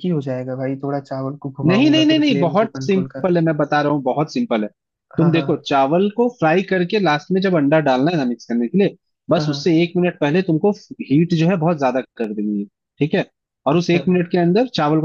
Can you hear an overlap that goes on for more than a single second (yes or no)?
yes